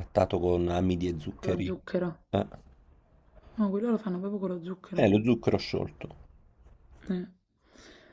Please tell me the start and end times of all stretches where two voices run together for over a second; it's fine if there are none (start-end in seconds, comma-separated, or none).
none